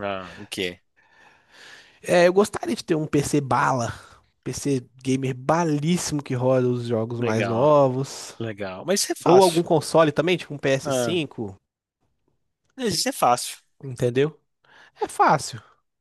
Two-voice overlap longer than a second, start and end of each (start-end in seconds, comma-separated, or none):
none